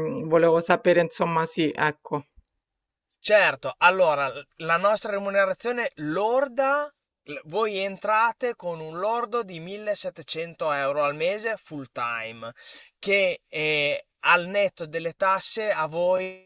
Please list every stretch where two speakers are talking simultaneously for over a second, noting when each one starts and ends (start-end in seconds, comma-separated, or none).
none